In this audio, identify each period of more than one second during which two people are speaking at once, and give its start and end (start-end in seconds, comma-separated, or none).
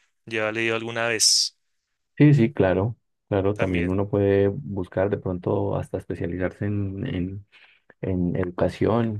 none